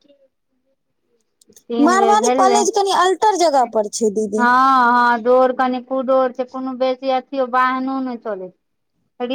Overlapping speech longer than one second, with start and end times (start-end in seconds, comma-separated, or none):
1.9-3.7